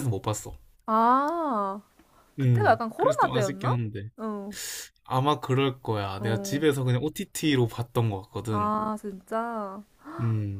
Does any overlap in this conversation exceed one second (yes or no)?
yes